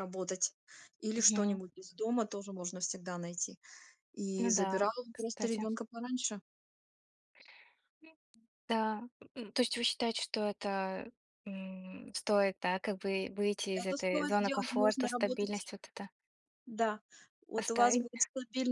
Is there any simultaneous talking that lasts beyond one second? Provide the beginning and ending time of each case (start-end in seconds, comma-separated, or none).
4.4-5.7, 13.7-15.6